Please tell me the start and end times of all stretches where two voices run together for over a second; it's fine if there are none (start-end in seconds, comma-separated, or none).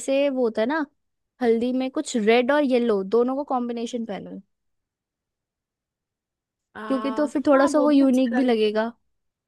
6.9-8.8